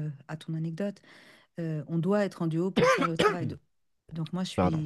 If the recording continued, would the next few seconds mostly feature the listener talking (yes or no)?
no